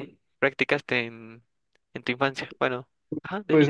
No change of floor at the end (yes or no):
no